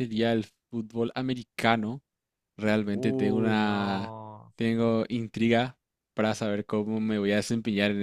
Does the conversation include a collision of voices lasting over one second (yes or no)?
yes